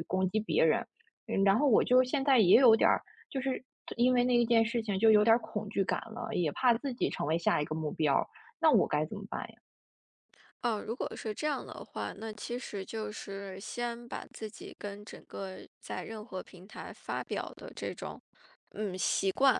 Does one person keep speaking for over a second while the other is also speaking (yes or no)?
no